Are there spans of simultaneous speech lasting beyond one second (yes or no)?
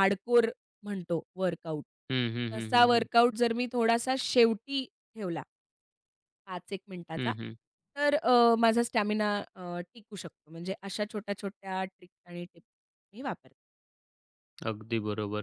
no